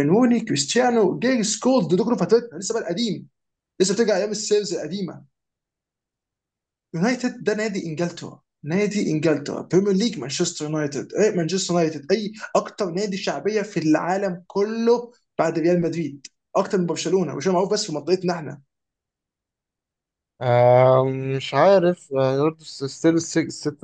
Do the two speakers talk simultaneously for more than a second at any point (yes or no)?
no